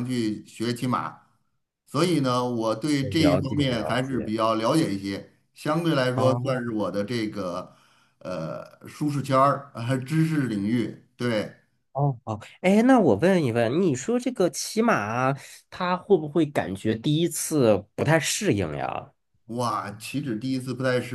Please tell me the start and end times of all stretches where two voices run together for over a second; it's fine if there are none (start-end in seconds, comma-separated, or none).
3.0-4.3